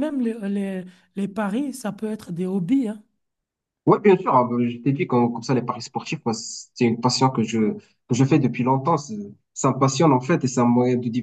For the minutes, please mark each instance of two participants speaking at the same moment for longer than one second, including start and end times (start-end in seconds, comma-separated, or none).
none